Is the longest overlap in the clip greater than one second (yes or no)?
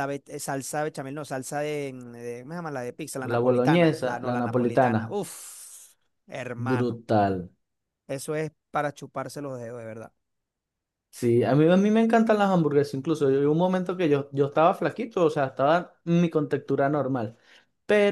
yes